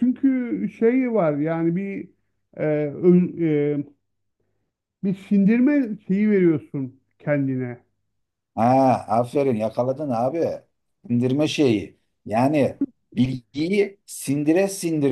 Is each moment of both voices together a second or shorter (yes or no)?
yes